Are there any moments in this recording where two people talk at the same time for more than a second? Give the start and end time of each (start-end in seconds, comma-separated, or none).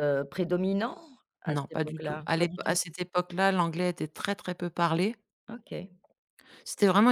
1.5-2.8